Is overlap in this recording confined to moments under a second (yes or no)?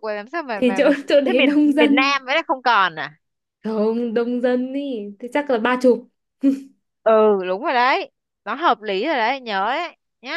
no